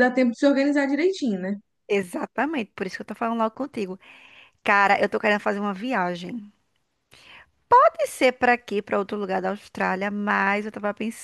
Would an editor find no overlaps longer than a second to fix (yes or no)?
yes